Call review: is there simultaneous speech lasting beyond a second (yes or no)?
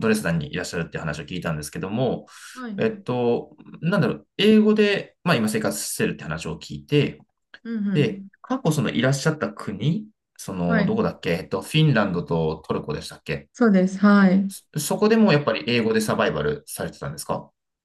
no